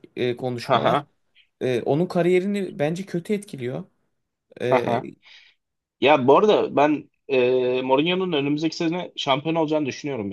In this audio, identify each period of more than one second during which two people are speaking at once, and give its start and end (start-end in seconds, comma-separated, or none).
none